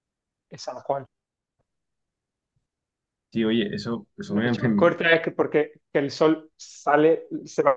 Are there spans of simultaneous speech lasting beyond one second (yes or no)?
no